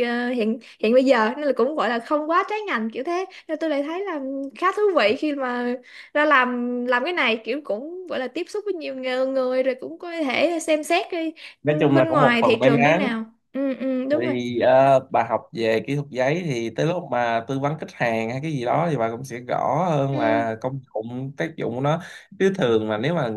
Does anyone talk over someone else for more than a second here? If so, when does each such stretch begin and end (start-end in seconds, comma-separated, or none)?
11.6-13.1